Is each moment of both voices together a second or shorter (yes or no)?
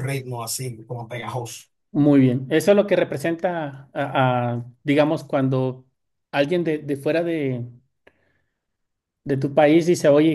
yes